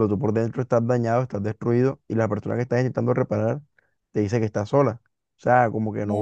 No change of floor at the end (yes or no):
no